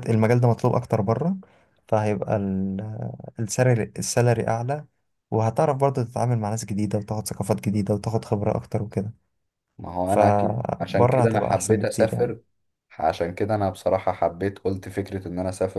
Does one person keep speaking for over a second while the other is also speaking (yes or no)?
yes